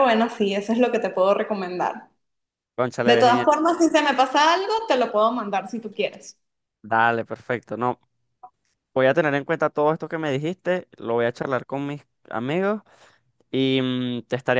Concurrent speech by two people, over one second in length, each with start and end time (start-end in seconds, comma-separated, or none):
none